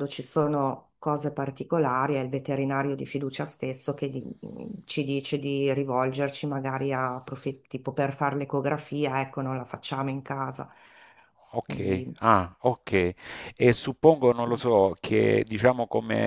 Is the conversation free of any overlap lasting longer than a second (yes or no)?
yes